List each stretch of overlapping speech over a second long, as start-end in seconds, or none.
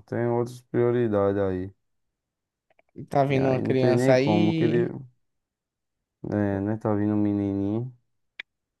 3.3-4.9